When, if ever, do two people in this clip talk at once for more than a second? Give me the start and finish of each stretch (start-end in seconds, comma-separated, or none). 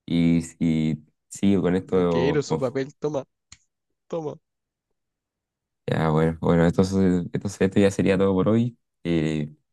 1.4-2.7